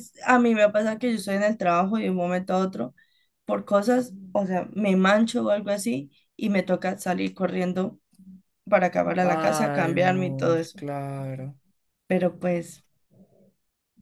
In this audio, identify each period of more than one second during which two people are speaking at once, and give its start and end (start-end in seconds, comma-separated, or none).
9.2-10.8